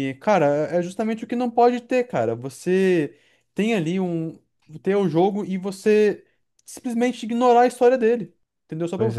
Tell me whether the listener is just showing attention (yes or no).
yes